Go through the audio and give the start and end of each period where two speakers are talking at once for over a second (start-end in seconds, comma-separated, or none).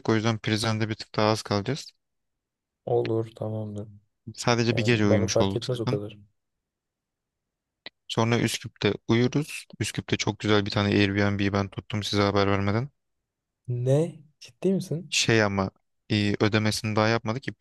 4.7-6.0